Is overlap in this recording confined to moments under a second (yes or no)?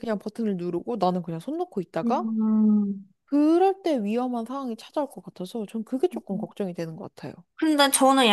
yes